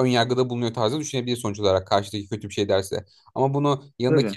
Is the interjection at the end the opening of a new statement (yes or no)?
no